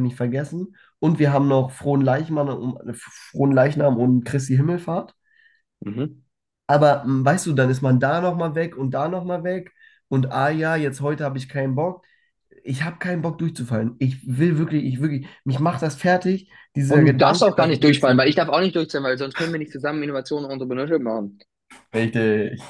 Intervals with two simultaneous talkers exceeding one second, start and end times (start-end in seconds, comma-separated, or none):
16.9-18.3